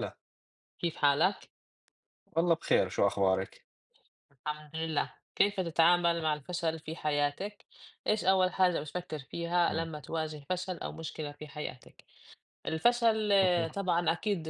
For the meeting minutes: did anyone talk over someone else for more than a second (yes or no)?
no